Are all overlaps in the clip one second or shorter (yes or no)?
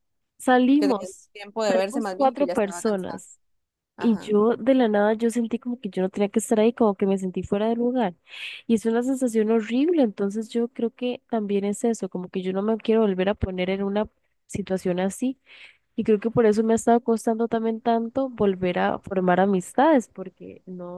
no